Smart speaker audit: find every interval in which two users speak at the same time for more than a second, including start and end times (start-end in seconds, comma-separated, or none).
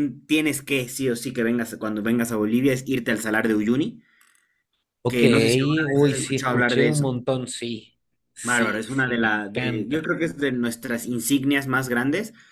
5.9-7.1, 8.4-10.1